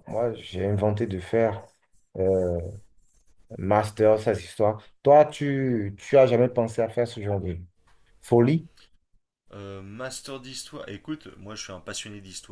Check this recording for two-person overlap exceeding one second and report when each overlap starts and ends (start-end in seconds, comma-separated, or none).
none